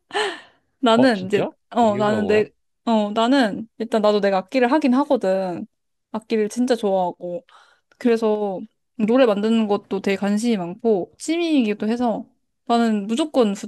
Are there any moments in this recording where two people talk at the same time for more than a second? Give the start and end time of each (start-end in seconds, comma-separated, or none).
0.9-2.5